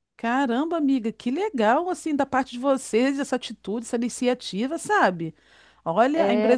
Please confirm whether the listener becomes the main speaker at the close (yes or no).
no